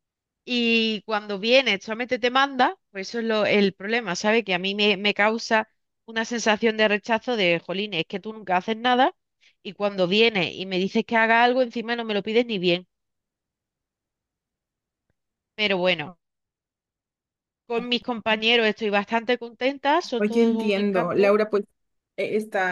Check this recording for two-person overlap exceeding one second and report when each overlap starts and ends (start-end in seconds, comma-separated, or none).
20.2-21.4